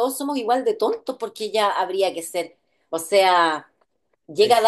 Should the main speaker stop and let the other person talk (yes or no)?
no